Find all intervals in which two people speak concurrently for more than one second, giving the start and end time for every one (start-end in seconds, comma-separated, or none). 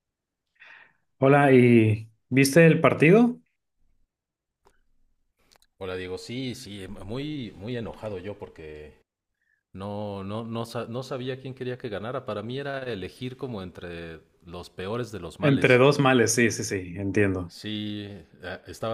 none